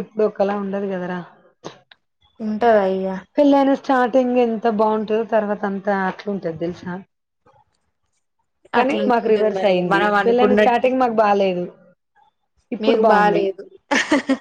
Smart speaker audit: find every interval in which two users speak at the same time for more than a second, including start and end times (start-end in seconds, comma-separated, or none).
8.8-10.9